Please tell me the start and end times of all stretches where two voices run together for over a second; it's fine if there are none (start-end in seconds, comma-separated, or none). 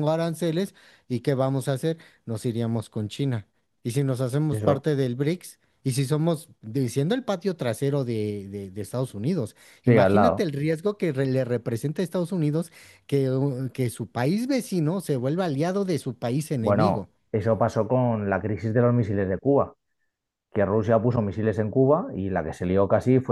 none